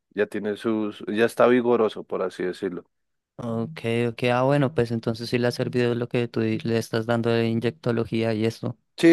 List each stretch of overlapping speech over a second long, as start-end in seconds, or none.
none